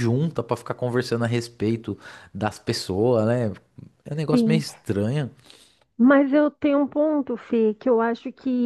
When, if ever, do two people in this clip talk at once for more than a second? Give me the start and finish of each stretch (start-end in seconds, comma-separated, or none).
none